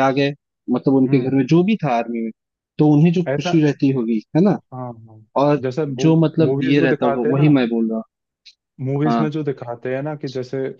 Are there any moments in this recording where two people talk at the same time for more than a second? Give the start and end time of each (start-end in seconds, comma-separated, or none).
6.0-7.6